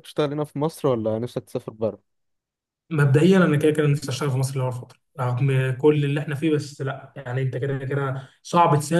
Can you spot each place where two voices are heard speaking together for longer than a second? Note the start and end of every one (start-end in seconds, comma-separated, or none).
none